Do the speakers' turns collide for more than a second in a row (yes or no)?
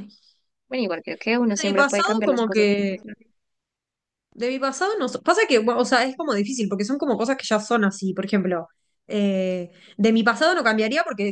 yes